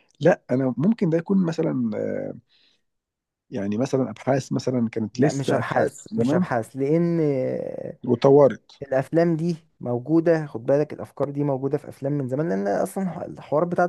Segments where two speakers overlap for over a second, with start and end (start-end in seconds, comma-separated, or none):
5.1-6.5